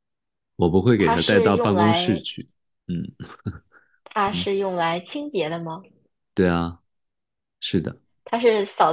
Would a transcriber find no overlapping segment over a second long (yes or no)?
no